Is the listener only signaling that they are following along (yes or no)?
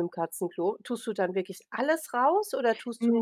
no